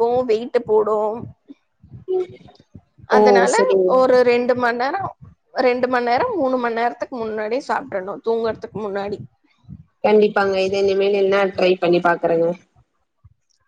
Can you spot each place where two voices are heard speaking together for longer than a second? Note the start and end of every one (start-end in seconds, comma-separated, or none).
none